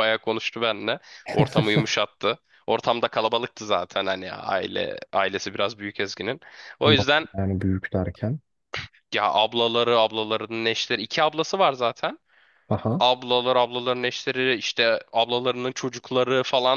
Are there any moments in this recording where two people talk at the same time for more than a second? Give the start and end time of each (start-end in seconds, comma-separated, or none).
none